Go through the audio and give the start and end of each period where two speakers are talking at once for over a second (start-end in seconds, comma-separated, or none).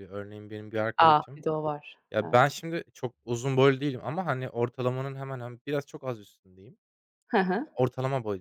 none